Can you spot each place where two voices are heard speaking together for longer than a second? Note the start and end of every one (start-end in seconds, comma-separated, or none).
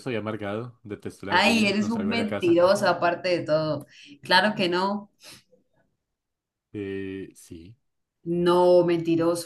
1.3-2.6